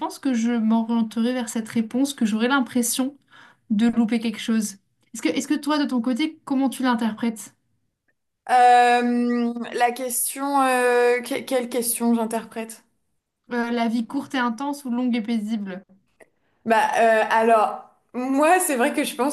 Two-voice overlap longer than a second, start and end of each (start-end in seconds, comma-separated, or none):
none